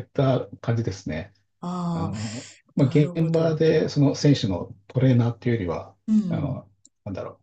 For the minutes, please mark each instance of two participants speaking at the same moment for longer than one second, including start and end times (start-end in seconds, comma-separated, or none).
1.9-3.6